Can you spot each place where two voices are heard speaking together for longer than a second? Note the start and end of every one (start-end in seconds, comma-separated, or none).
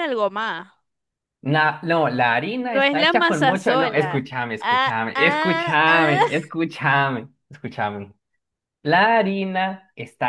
2.6-6.2